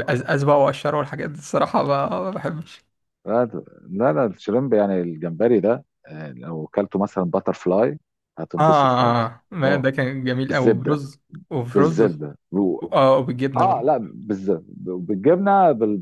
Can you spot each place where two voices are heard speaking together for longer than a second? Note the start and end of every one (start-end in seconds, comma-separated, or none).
8.6-9.8